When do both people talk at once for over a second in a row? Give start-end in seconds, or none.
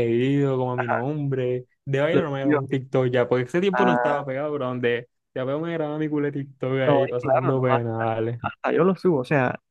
6.8-8.1